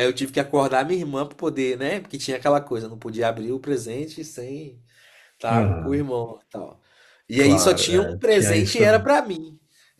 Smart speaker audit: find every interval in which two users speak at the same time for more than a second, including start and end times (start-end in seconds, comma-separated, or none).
7.4-9.1